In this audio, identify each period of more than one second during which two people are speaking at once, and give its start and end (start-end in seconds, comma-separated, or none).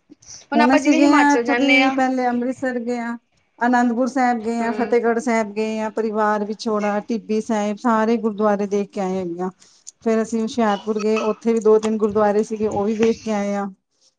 0.6-1.9